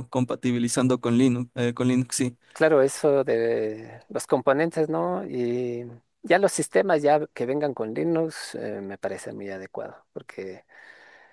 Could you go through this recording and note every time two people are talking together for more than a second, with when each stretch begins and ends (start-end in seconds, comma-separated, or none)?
none